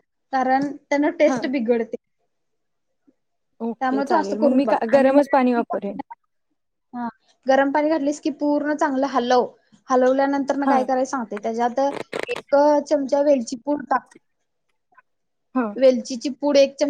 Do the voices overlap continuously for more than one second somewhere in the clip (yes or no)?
yes